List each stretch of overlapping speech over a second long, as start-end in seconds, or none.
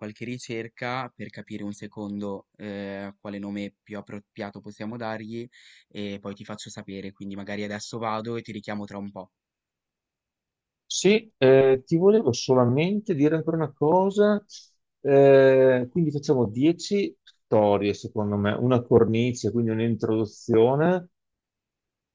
none